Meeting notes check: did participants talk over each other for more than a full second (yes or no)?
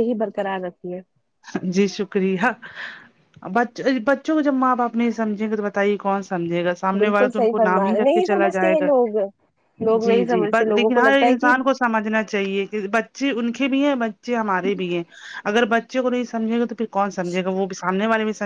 yes